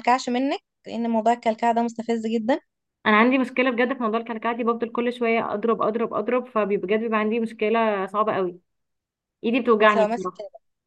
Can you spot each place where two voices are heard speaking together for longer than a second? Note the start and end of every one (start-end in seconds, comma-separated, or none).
none